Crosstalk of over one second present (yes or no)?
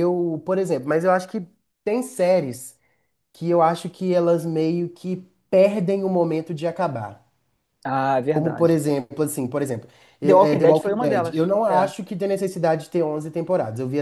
yes